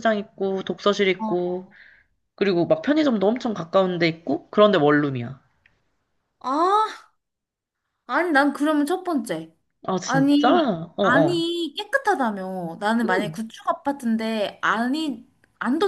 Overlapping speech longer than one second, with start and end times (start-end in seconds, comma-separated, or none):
10.0-11.4